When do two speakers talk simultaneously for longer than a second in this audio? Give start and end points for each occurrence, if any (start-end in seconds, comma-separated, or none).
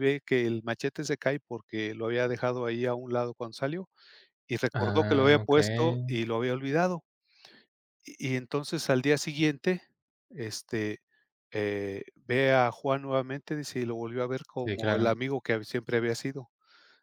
4.7-6.1